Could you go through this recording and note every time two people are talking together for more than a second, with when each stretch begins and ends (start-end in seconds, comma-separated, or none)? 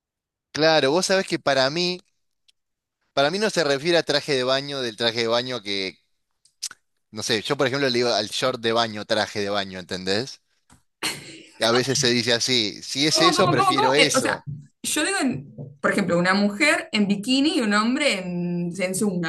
13.1-14.4